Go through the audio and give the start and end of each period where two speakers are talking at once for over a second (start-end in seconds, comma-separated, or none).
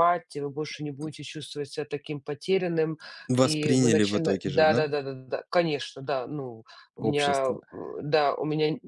3.4-4.8